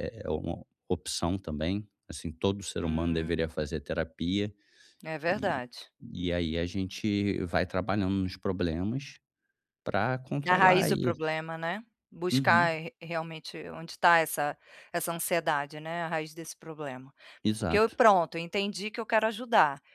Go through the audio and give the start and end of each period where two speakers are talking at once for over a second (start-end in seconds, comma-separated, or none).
none